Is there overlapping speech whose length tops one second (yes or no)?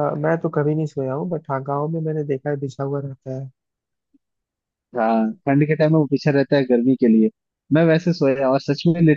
no